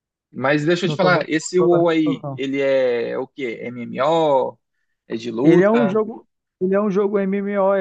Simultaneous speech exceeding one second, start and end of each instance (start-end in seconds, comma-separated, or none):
0.8-2.4